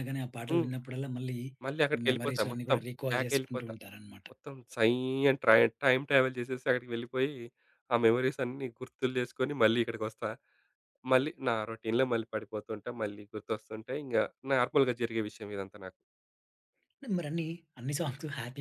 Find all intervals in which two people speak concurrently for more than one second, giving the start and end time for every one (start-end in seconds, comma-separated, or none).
1.9-3.7